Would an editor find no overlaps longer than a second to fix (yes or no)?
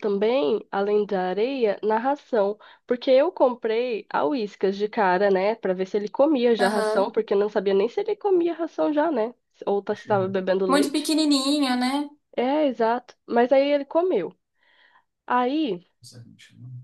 yes